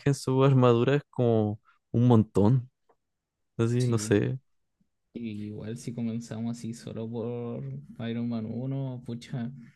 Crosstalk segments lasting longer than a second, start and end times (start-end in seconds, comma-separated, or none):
none